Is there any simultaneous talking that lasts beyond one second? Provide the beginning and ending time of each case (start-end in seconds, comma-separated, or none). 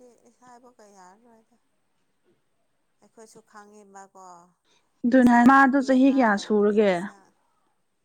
5.1-6.9